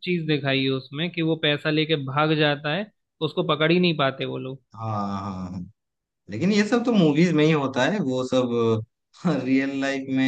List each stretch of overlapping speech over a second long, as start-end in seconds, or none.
none